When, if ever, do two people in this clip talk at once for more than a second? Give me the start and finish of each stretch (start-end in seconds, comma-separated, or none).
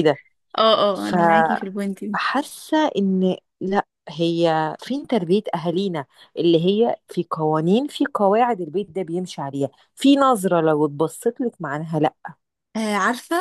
none